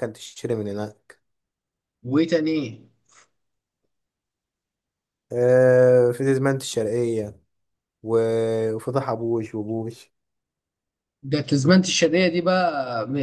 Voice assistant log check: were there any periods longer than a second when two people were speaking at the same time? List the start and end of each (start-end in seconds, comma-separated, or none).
none